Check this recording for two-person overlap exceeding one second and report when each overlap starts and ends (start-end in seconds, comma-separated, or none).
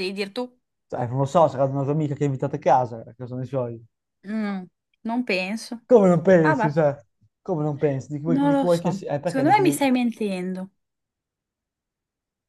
8.3-9.8